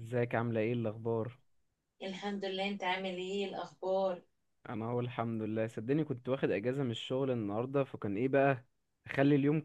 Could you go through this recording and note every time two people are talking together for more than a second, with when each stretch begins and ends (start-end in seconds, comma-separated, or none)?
none